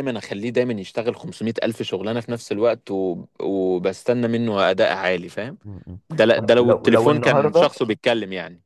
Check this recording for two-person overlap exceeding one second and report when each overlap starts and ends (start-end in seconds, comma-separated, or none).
6.3-7.7